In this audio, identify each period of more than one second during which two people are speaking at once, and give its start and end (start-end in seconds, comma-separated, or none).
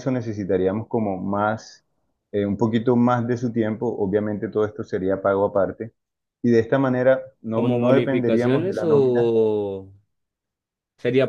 7.5-9.3